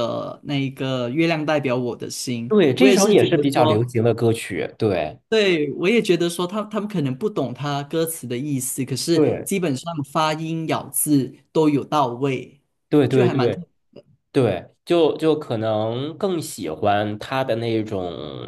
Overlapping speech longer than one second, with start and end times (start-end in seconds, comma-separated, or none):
2.5-3.9